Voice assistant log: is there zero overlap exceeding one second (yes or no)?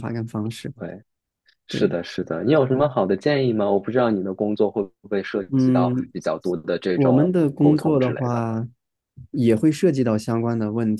no